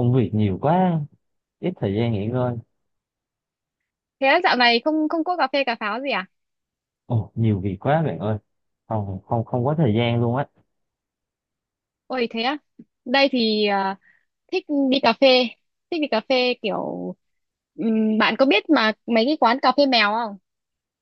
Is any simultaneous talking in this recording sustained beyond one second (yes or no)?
no